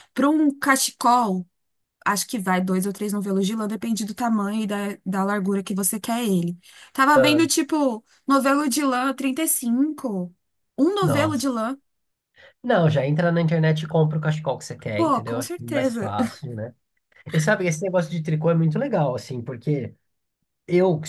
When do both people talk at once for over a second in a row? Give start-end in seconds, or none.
14.9-16.1